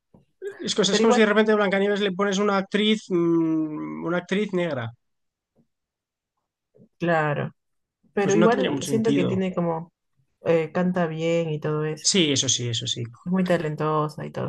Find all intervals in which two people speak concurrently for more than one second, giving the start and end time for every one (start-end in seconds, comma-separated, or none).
8.2-9.4